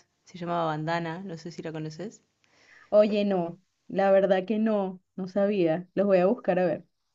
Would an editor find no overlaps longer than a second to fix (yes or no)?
yes